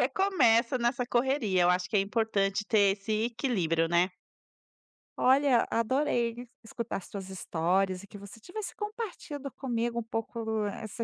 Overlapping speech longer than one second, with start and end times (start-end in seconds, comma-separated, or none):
none